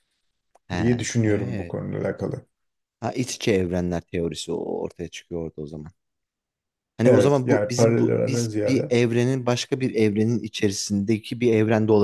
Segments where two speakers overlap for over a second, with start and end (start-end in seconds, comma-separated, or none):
7.0-8.9